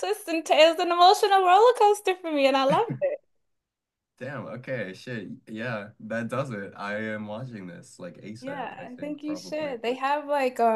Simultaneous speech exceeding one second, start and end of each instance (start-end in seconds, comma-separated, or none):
8.4-9.8